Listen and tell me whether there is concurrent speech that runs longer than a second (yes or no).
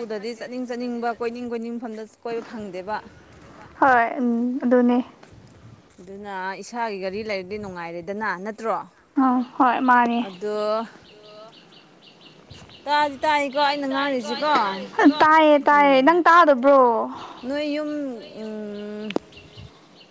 no